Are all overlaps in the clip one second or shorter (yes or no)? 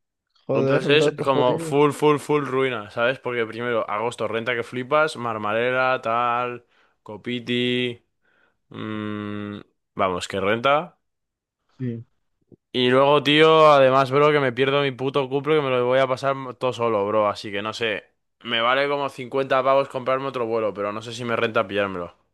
no